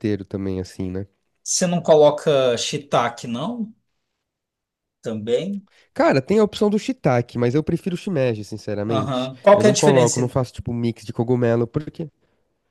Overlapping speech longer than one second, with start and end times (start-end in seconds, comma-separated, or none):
8.9-10.3